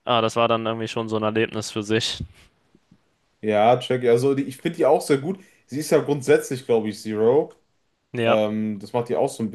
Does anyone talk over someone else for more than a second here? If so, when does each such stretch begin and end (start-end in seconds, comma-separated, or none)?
none